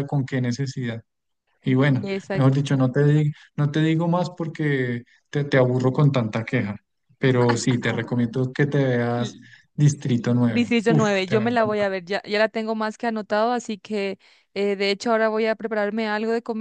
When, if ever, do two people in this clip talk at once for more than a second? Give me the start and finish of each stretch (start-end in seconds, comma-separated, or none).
10.4-11.9